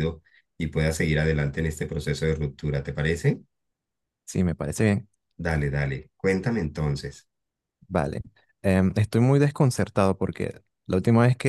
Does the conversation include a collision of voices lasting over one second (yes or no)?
no